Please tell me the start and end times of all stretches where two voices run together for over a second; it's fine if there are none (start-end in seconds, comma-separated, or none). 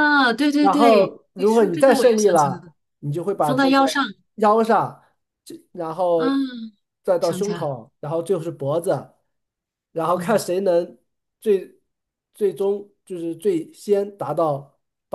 0.6-2.7